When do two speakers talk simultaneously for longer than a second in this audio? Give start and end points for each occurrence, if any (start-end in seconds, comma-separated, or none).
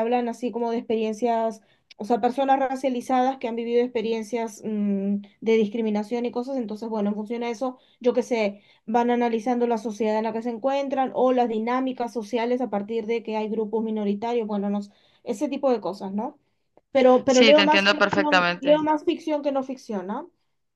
17.3-18.9